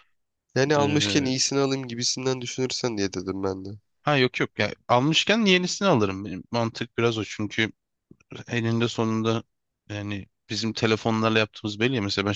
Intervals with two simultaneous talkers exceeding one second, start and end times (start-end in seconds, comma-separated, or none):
none